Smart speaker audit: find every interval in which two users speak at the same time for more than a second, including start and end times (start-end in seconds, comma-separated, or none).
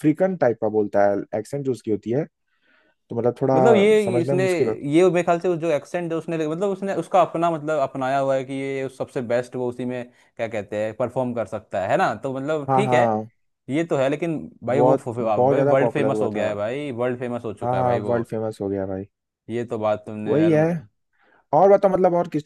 14.7-16.5